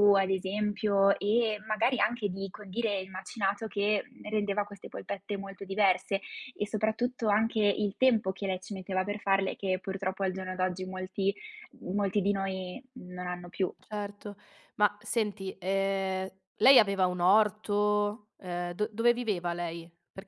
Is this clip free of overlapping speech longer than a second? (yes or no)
yes